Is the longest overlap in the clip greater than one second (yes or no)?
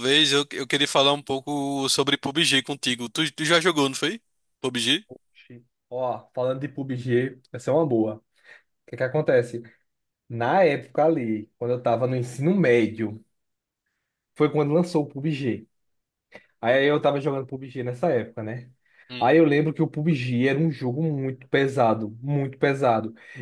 no